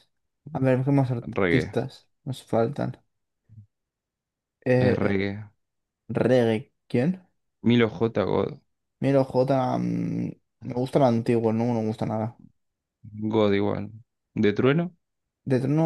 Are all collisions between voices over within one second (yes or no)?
yes